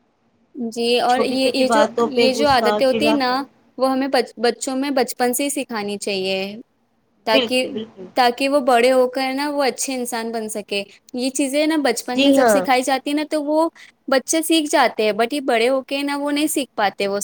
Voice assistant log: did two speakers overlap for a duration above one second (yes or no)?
yes